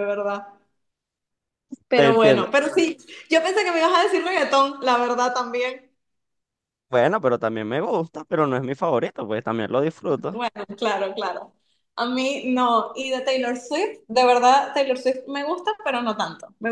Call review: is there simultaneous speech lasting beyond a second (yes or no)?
no